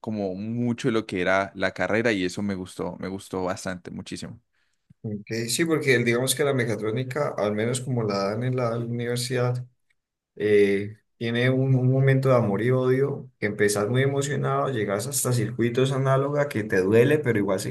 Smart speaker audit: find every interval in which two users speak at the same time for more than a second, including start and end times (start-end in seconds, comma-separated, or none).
none